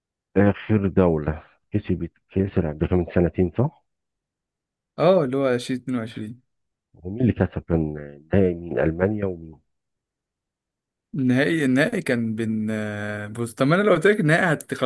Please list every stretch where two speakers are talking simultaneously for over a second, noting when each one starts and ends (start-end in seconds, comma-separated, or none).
none